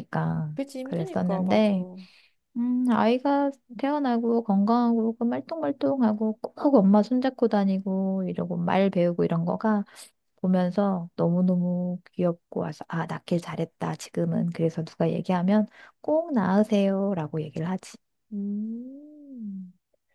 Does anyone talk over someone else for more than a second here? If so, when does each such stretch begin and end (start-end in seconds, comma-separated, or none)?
0.5-1.8